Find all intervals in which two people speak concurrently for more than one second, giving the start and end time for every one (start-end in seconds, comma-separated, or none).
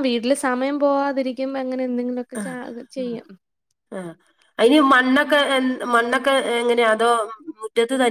none